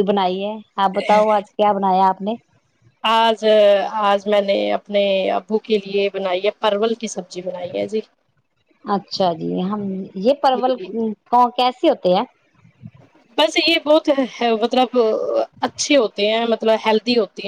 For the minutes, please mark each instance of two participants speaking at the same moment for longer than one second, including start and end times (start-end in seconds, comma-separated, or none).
none